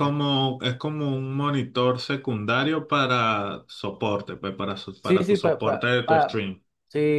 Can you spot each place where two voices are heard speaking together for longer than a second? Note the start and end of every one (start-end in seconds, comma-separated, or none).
5.0-6.4